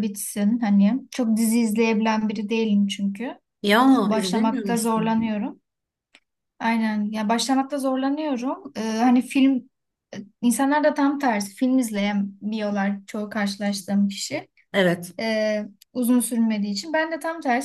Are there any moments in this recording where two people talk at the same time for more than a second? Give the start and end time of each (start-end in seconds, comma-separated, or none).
4.0-5.2